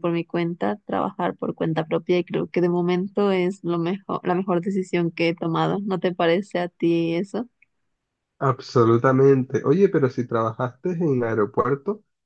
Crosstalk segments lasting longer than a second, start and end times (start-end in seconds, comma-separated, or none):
none